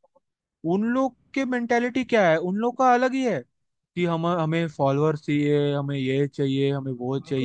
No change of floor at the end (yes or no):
no